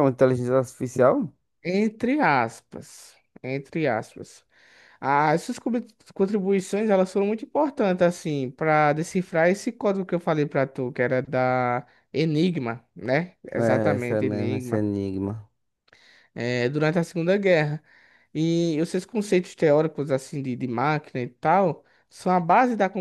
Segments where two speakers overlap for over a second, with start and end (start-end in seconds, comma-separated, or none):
13.6-14.8